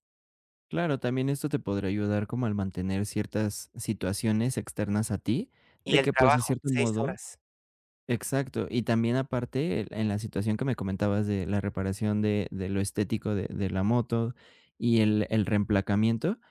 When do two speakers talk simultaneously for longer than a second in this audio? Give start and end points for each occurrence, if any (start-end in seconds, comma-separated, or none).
5.8-7.2